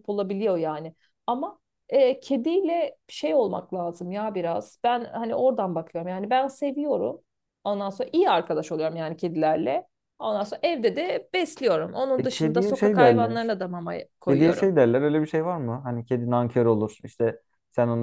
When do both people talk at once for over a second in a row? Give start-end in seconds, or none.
12.2-13.5